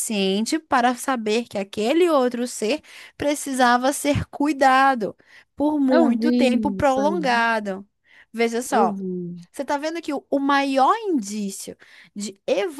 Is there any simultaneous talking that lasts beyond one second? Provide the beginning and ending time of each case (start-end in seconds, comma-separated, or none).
5.9-7.5